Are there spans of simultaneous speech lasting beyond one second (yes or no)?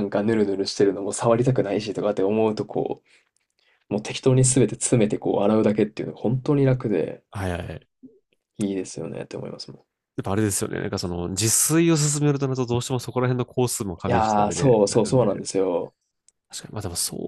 yes